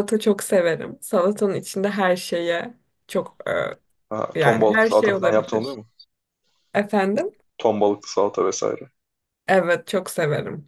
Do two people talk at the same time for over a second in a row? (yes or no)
yes